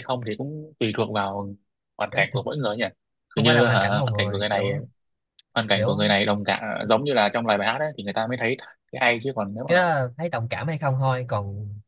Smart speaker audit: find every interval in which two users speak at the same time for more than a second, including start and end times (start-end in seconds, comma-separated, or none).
3.4-4.7